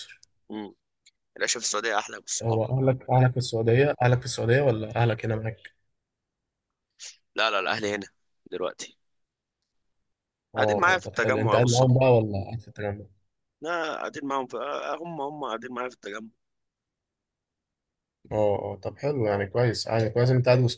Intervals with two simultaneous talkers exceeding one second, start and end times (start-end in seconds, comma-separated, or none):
10.6-11.9